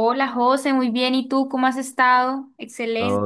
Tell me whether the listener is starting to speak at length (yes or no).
yes